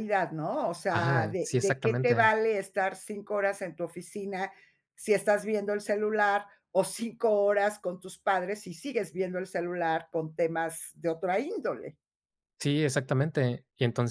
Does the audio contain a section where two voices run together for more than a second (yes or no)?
yes